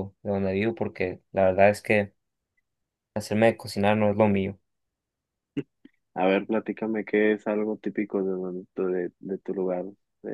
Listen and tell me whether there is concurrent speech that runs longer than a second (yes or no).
no